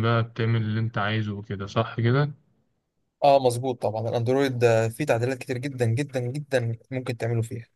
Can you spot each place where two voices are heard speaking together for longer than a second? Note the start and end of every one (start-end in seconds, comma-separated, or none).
none